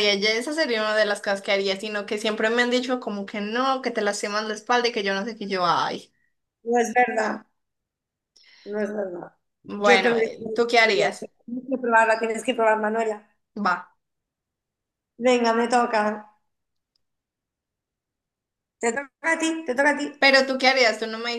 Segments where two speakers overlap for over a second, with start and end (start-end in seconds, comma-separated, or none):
9.8-11.3